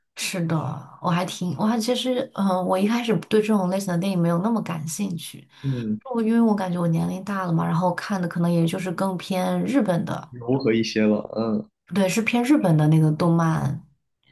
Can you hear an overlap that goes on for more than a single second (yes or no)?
no